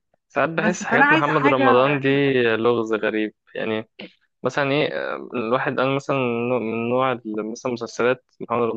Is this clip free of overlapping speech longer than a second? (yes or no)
no